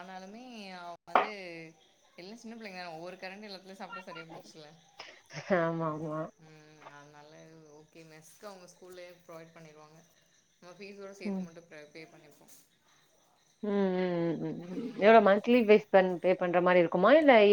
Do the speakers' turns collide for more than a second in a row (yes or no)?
no